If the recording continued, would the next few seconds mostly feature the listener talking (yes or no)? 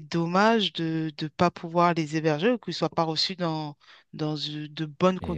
no